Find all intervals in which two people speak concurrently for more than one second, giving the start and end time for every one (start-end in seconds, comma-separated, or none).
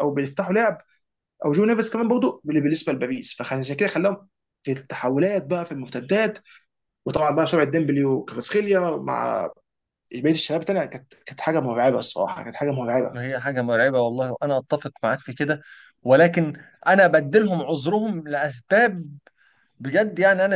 none